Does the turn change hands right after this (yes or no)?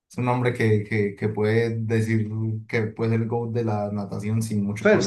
yes